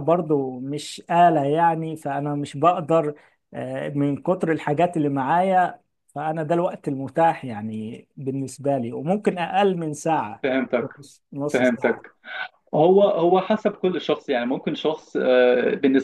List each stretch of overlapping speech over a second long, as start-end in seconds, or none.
none